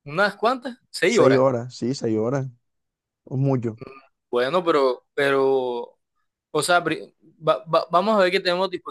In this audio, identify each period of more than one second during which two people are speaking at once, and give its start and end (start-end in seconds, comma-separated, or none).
none